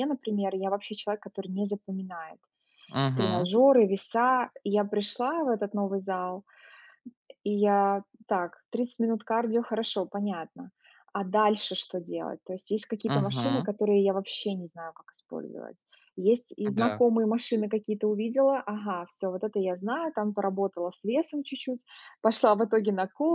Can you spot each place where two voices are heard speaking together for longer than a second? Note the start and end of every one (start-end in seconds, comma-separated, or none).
none